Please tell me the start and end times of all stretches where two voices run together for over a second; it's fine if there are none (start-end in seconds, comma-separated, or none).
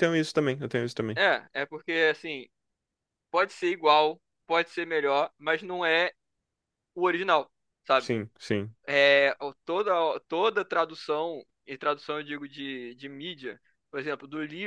none